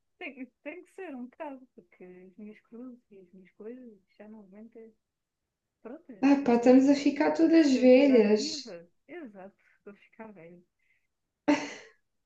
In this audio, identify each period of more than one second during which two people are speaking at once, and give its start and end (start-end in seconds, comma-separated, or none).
7.5-8.7